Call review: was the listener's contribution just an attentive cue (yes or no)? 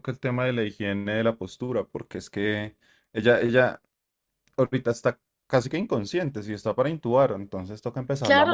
no